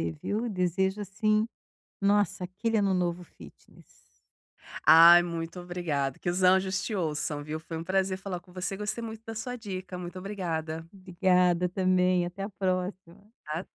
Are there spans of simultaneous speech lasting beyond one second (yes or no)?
no